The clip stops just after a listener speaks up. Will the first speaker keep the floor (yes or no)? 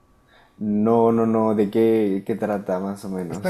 no